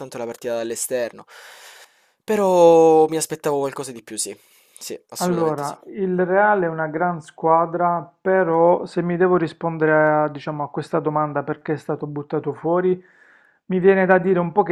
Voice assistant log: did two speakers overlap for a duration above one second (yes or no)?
no